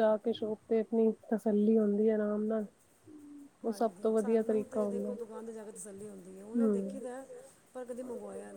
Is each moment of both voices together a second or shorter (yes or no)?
no